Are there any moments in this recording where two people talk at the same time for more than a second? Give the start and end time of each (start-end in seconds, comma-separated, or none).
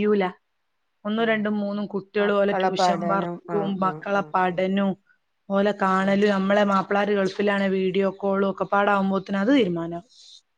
2.2-4.6